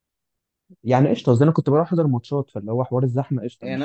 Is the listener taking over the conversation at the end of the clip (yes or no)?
yes